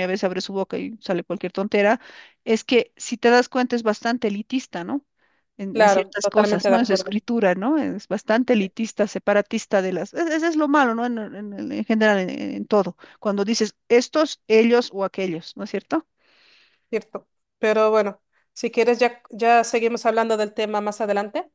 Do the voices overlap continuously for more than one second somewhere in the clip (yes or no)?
yes